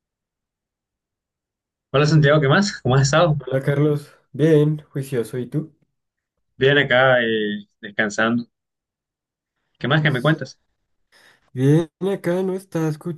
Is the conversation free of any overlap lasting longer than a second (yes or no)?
yes